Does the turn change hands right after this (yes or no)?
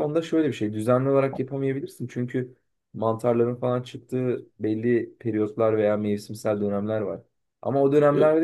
no